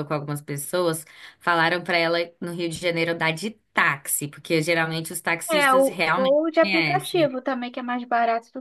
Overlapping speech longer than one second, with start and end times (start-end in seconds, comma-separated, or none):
5.5-7.3